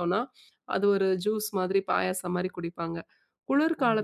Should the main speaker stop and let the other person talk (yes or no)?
no